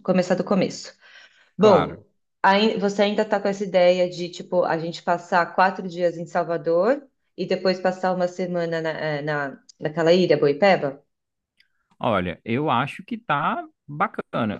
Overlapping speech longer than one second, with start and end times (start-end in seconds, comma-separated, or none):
none